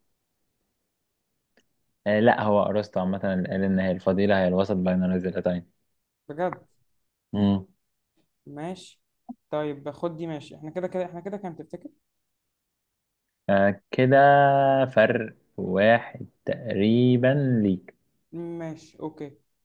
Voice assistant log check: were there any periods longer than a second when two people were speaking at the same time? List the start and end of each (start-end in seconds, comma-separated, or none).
none